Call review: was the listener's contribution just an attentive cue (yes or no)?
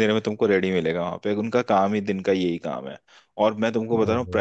yes